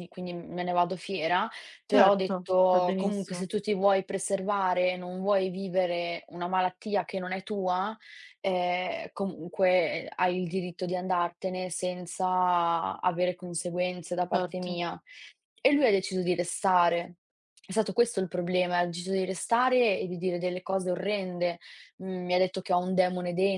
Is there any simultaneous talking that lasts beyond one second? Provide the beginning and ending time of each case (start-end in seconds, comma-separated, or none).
1.9-3.5